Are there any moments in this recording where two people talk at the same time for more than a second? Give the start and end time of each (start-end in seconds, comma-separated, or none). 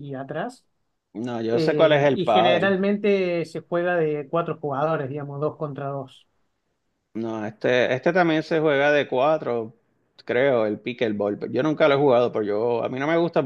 1.5-2.7